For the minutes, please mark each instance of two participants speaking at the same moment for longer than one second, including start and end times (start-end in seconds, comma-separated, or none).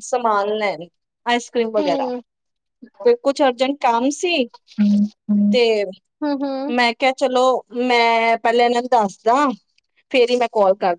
none